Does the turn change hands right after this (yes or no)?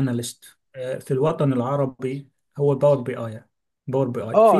yes